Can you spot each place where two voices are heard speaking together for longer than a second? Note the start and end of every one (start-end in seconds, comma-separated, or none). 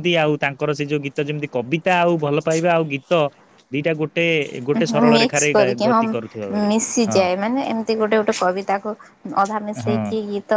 none